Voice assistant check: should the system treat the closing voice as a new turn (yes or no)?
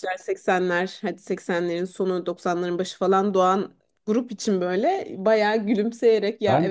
no